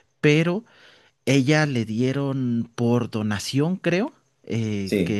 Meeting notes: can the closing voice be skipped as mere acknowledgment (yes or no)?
yes